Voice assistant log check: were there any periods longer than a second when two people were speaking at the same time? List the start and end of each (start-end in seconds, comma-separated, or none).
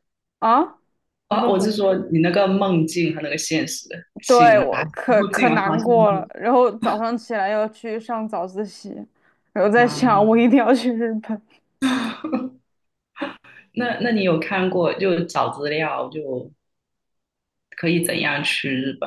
4.2-6.1